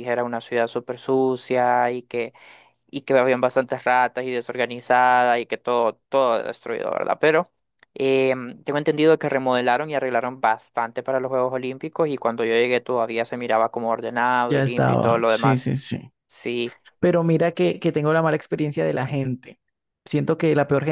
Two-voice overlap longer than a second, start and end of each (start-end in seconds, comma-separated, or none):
14.5-15.7